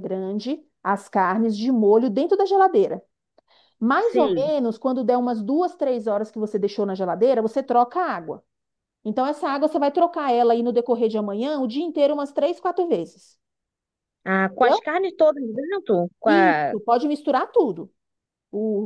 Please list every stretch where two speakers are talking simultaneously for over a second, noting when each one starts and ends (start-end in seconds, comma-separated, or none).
none